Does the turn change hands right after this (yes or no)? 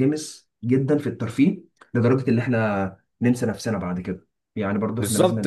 yes